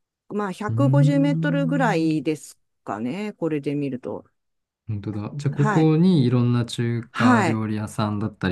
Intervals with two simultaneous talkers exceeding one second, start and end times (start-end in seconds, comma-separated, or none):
0.7-2.1